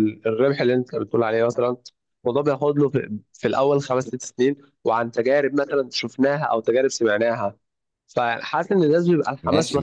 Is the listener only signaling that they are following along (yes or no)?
no